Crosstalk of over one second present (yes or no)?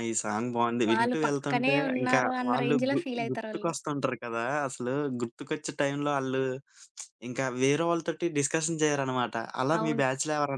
yes